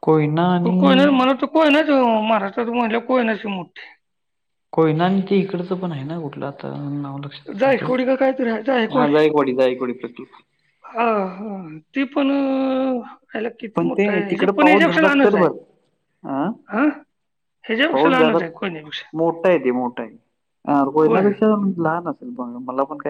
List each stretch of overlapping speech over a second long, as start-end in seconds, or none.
13.8-15.5